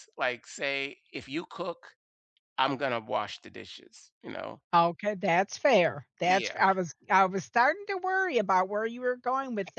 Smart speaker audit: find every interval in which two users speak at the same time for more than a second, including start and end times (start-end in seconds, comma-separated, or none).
none